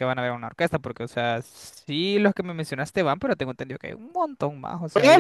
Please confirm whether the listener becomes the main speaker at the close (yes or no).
yes